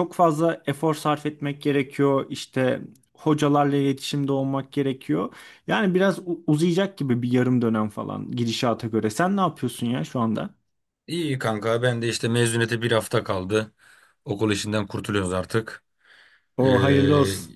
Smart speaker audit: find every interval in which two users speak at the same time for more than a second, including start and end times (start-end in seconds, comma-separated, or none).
none